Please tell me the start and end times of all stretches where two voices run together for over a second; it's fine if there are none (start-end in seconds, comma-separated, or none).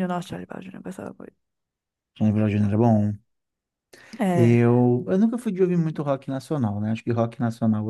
none